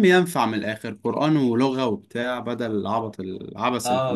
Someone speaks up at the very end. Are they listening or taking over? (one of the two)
taking over